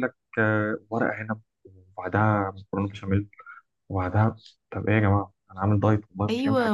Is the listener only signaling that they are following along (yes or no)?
no